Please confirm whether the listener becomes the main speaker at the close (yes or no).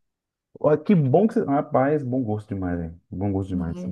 yes